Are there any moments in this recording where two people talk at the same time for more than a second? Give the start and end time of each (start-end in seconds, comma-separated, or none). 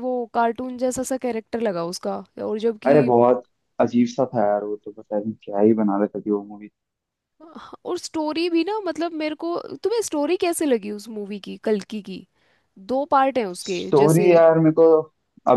none